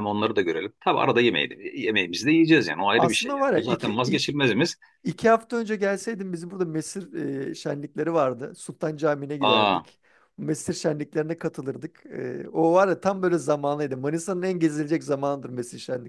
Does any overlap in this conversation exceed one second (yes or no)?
yes